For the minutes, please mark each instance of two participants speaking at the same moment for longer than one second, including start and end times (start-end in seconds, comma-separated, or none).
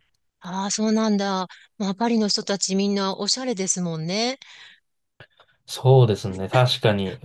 none